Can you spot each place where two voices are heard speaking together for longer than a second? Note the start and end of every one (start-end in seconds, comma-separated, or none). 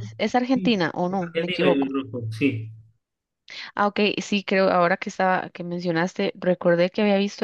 0.5-1.9